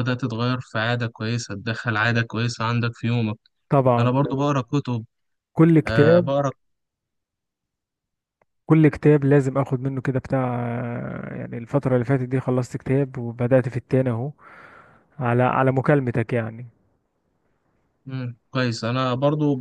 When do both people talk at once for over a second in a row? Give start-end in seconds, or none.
none